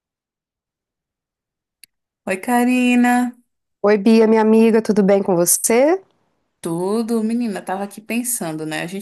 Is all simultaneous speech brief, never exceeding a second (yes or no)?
yes